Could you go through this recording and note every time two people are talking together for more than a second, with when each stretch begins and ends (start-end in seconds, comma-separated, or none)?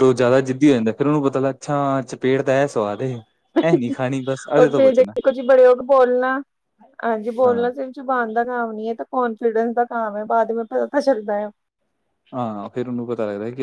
3.7-5.1